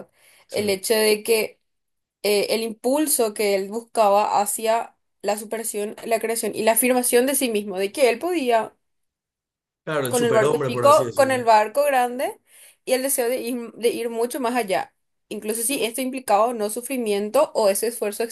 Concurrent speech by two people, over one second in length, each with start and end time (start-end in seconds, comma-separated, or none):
10.1-11.4